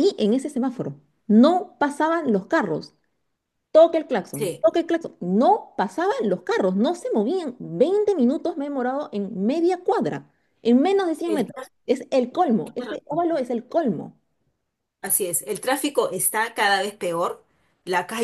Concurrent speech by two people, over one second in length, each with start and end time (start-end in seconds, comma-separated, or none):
none